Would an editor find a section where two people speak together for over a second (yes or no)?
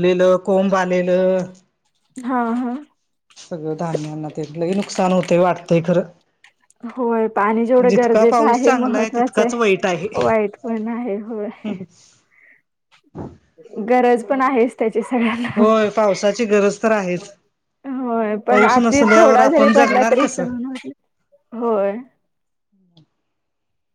yes